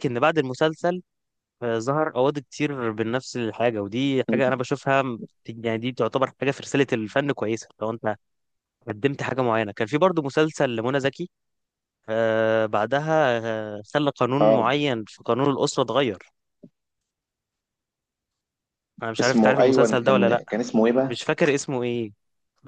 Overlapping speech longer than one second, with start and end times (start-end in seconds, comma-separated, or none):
19.2-20.4